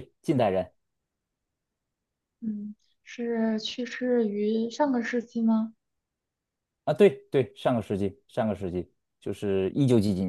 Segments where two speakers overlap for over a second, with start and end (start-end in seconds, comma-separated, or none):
none